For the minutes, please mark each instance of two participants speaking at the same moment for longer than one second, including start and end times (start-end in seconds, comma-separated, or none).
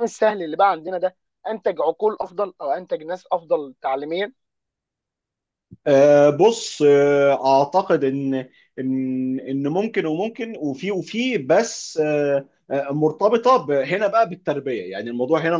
none